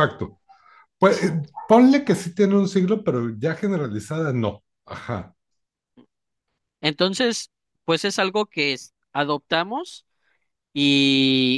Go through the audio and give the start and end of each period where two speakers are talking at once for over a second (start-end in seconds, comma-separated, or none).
none